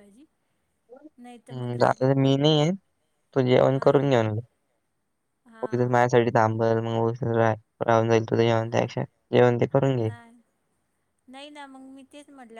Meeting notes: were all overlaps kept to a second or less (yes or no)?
yes